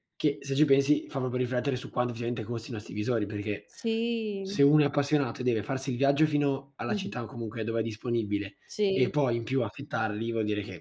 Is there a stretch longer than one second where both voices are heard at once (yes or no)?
no